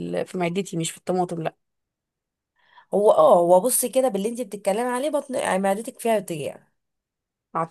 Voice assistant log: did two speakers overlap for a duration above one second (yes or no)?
no